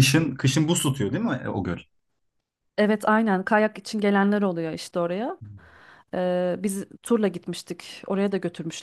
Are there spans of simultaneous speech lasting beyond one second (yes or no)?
no